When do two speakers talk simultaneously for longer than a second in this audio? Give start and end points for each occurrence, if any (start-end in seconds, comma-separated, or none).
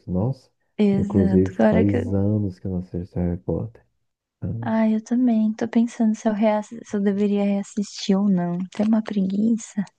0.9-2.2